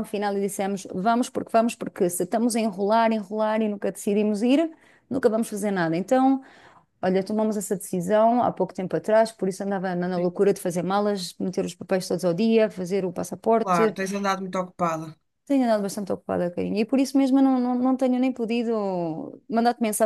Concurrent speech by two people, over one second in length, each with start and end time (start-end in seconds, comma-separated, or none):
none